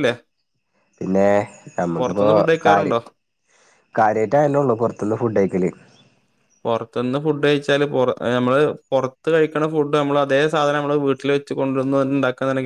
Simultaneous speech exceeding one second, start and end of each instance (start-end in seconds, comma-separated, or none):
none